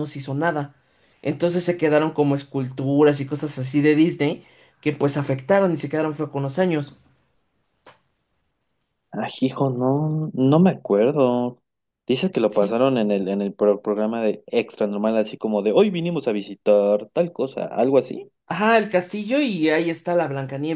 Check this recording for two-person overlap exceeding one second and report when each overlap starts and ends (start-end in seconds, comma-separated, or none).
none